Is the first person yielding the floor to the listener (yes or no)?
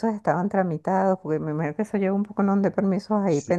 yes